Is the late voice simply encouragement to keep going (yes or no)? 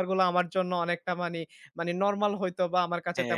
no